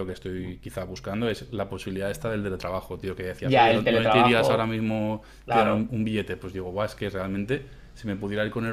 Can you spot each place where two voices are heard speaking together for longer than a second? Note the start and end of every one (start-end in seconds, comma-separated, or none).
3.4-4.8